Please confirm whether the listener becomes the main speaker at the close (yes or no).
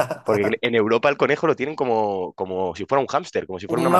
yes